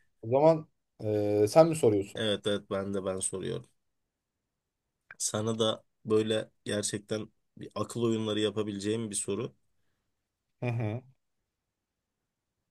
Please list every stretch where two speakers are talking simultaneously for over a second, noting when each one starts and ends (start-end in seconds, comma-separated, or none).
none